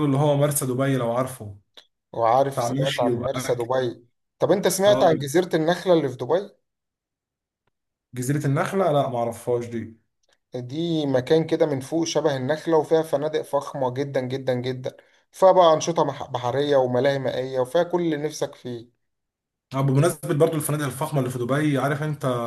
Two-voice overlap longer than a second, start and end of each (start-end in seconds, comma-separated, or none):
2.5-3.9